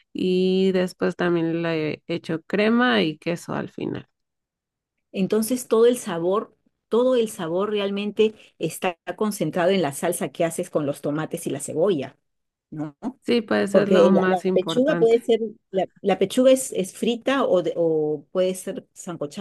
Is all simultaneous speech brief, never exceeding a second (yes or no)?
no